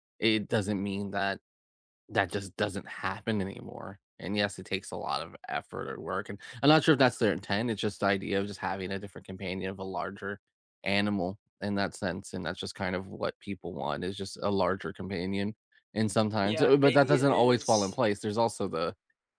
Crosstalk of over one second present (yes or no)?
yes